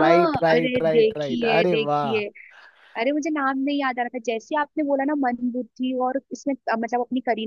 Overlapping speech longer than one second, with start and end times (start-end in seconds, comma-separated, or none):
0.5-2.2